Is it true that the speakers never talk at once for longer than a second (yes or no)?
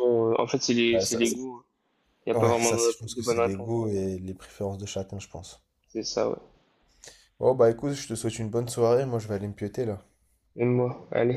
no